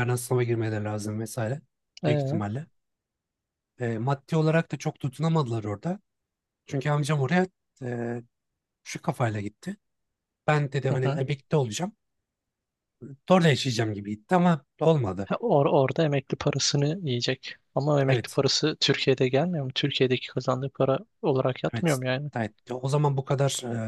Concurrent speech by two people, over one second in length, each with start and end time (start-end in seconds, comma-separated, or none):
none